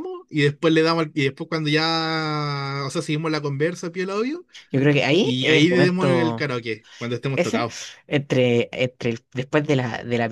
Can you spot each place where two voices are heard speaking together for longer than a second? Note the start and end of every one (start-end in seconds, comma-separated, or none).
5.2-6.5